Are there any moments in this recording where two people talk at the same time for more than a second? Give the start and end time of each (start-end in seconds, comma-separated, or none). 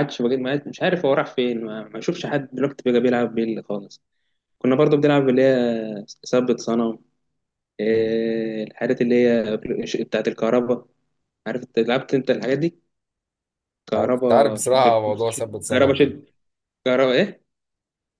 14.0-16.1